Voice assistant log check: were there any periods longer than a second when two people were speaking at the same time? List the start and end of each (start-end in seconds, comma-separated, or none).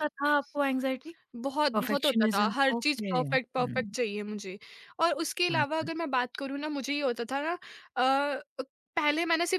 1.7-4.0